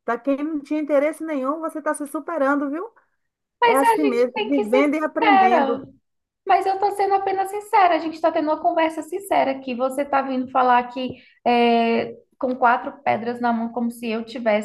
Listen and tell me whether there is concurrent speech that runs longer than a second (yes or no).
yes